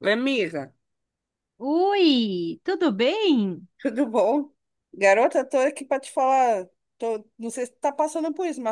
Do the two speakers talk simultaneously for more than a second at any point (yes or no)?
no